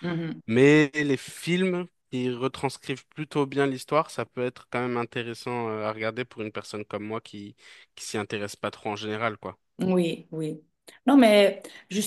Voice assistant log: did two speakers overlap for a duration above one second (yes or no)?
no